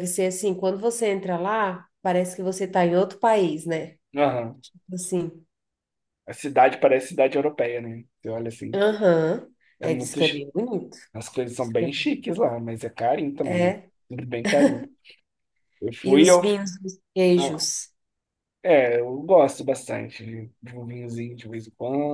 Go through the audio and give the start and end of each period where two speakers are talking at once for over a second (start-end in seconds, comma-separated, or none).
none